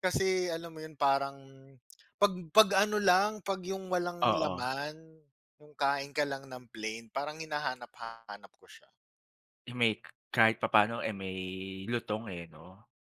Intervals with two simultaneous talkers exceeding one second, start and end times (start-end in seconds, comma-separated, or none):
none